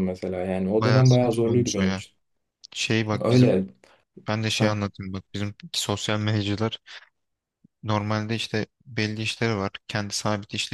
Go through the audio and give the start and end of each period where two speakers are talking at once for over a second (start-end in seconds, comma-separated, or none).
0.7-2.0